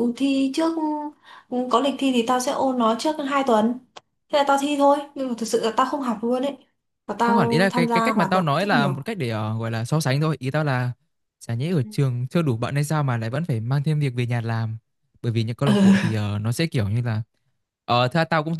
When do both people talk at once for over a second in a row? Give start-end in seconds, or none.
7.3-9.0